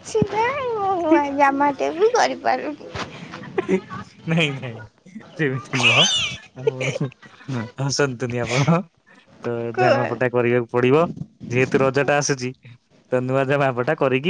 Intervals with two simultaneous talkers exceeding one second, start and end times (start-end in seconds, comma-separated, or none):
none